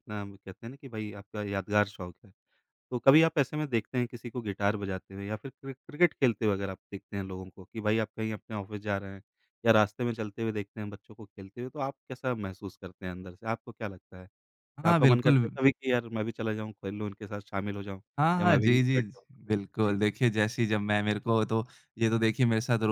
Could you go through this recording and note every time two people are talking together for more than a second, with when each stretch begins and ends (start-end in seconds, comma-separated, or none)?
18.4-19.9